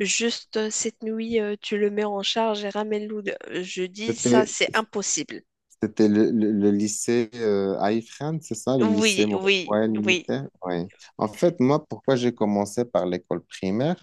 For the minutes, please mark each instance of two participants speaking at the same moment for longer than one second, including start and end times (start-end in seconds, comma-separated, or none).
8.8-10.3